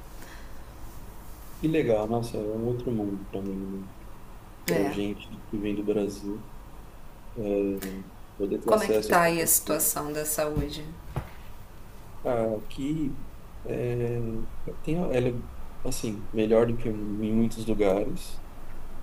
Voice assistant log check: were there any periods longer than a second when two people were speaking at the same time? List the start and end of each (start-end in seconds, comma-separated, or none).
8.7-10.0